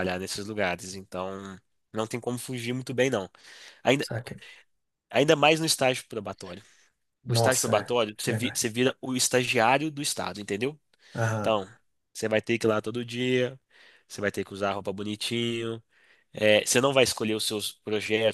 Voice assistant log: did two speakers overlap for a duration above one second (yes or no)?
yes